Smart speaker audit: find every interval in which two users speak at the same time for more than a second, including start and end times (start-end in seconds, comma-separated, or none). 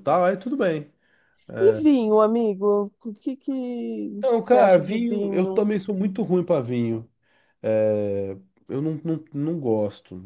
4.2-5.8